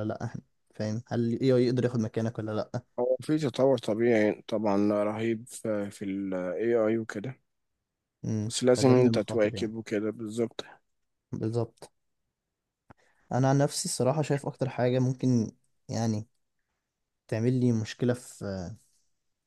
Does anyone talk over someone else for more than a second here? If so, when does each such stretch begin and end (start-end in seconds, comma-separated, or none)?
8.5-9.7